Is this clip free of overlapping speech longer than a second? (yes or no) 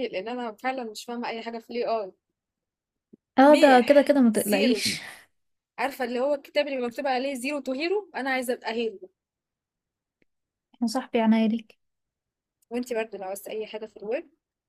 no